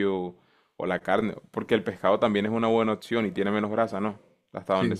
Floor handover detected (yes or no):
yes